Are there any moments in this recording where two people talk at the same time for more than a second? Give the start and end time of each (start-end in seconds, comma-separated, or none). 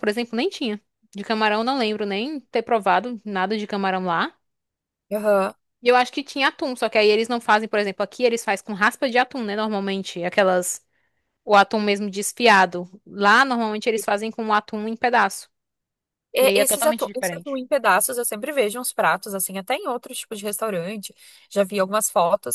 16.4-17.6